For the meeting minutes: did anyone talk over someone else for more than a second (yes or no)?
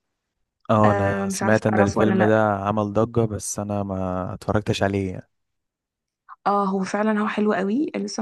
yes